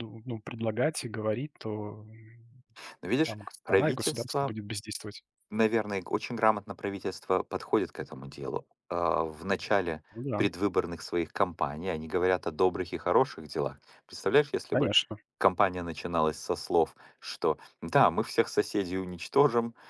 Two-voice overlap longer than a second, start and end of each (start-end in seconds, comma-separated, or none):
3.2-4.5